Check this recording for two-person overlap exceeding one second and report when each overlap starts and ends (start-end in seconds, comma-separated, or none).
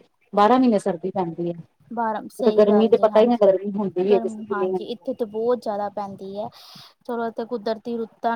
2.6-5.0